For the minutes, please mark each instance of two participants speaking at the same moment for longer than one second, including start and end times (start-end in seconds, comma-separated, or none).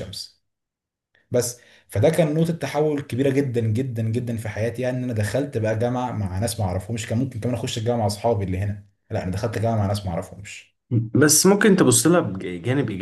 none